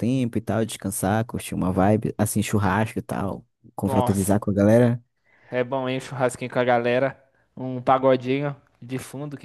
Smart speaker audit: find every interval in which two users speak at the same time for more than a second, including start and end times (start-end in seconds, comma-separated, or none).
none